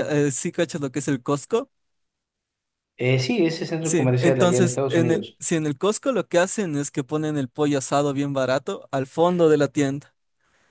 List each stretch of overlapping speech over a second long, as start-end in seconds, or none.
3.8-5.4